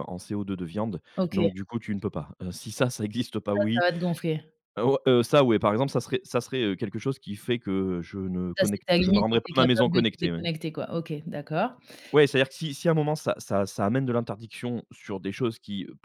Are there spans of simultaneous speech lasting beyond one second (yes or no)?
yes